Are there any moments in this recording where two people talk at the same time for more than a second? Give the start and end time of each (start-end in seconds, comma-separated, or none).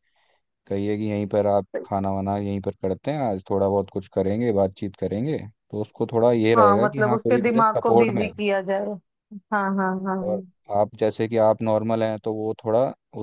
6.5-8.3